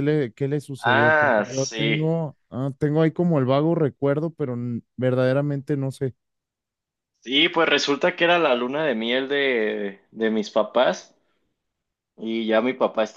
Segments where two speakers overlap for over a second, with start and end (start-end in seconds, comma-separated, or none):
0.8-2.1